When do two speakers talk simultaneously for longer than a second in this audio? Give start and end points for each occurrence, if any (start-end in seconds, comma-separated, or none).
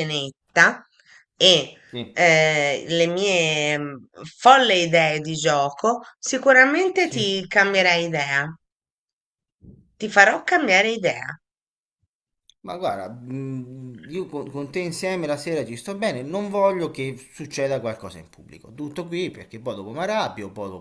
none